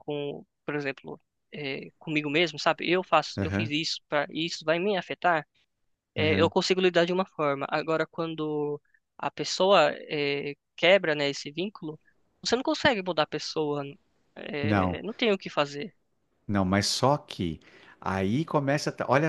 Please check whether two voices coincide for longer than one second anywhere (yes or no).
no